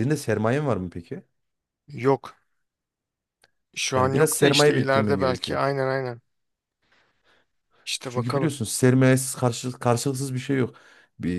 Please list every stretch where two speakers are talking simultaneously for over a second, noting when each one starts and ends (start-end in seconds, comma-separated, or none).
3.9-5.6